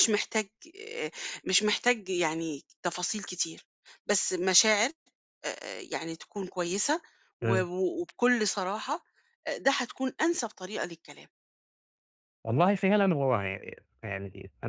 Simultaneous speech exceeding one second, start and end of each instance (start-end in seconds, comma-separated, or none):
none